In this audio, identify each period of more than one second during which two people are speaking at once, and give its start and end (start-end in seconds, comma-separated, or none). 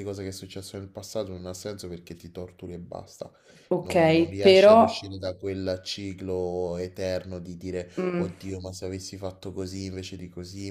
3.8-5.2